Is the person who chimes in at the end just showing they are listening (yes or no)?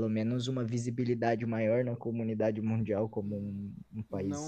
no